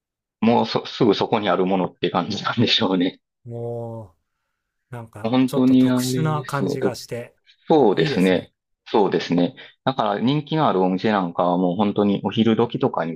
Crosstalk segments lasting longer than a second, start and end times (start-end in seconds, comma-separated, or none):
5.2-7.0